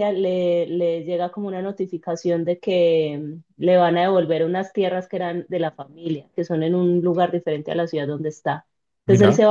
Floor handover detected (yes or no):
no